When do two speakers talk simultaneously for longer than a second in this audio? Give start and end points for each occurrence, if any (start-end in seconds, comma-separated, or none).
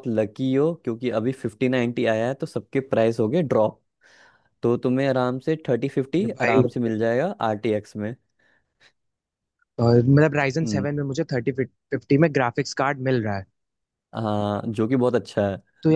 none